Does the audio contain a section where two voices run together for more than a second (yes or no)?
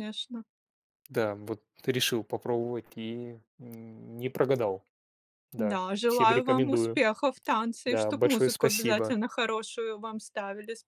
yes